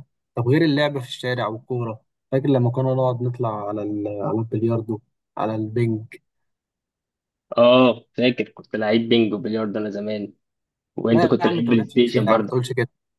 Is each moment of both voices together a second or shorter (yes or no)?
no